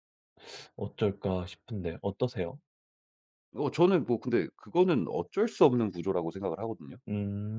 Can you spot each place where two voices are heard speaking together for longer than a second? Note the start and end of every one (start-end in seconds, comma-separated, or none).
none